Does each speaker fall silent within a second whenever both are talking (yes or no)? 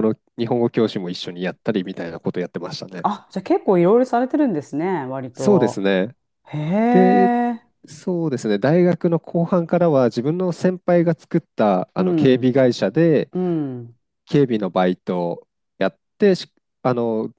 yes